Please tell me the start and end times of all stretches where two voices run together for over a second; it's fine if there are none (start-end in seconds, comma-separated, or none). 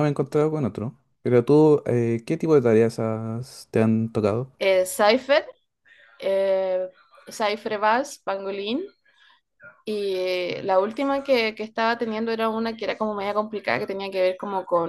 none